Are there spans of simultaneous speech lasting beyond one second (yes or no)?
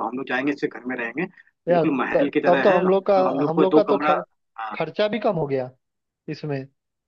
yes